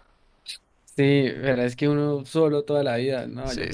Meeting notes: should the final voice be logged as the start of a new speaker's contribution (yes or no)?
yes